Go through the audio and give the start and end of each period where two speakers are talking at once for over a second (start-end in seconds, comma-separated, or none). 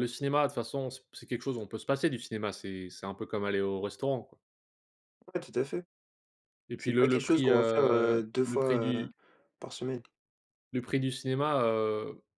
6.8-9.1